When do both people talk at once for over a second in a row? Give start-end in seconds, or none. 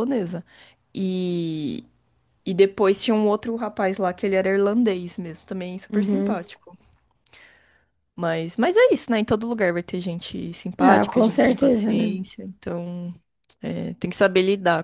10.8-12.2